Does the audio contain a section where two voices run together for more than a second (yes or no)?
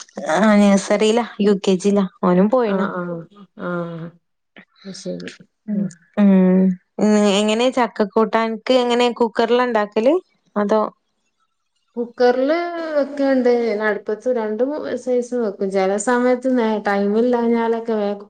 no